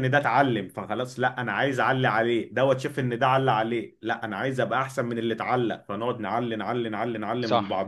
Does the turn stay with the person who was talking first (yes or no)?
no